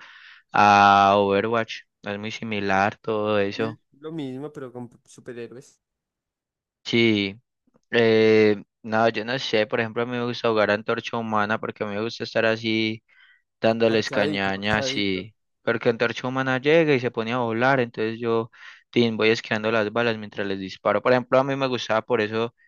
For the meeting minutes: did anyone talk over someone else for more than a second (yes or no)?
yes